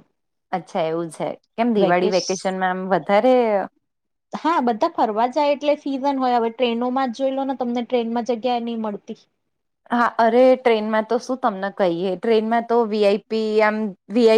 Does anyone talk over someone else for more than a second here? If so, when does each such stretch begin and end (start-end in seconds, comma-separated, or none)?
none